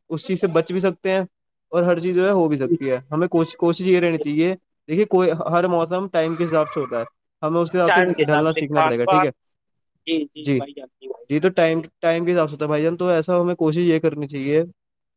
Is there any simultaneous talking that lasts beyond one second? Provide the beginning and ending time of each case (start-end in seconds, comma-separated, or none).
7.9-9.3